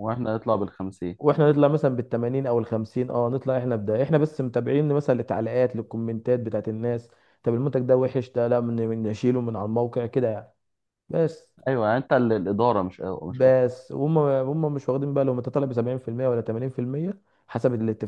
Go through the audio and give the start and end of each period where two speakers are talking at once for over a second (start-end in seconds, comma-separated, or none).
none